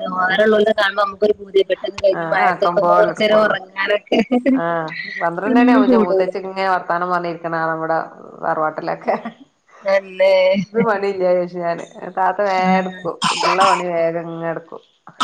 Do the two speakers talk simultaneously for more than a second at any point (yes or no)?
no